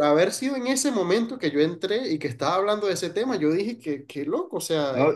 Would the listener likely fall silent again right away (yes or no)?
no